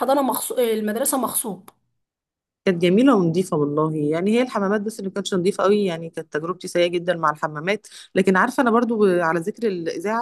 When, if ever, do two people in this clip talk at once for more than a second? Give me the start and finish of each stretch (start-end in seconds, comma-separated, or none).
none